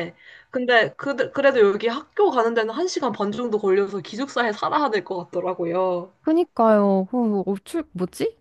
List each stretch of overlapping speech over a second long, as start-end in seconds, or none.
none